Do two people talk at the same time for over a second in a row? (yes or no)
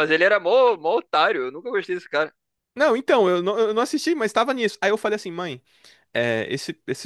no